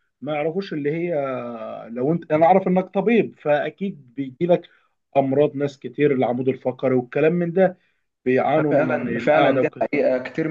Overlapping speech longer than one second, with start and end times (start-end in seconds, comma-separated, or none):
8.6-9.9